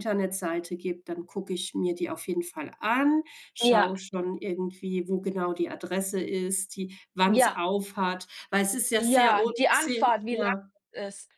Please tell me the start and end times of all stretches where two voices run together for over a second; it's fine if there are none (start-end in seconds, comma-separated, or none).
9.0-10.5